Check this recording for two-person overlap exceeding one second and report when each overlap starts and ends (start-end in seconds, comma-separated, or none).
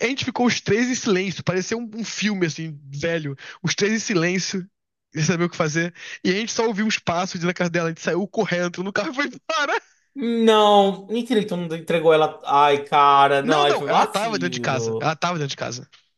13.4-15.1